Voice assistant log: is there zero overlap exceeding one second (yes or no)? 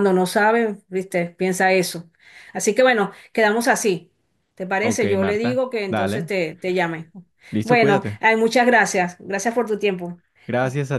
no